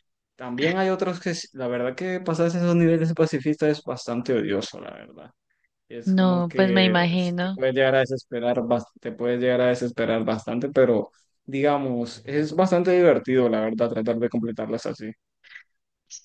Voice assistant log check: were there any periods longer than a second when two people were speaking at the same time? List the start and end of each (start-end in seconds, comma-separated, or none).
6.0-7.6